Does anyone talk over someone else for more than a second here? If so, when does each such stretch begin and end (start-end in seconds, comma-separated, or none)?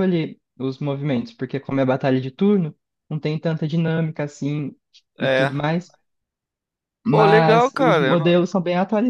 7.1-8.4